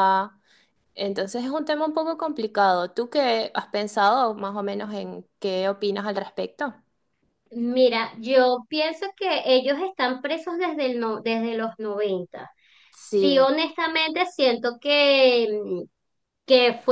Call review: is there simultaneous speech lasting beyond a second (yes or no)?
no